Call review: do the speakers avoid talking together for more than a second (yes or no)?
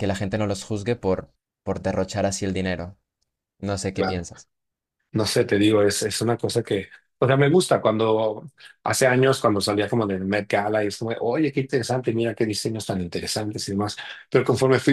yes